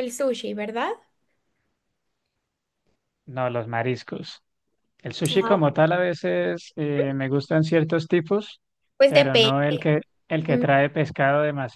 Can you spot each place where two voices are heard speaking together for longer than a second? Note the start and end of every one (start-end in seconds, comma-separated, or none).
none